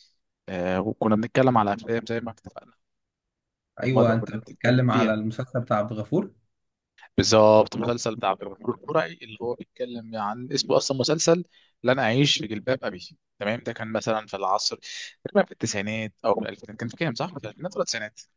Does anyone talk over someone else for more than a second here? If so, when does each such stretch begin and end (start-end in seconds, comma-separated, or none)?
3.8-5.1